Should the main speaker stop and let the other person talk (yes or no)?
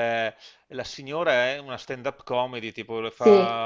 no